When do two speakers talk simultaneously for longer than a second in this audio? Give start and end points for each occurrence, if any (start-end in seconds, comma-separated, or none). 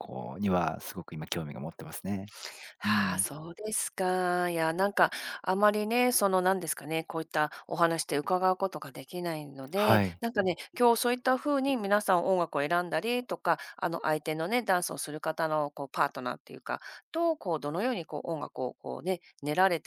none